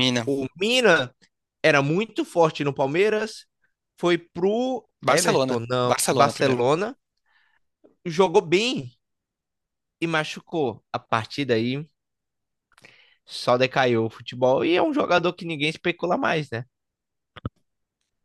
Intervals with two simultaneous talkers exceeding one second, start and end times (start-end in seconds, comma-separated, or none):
5.1-6.6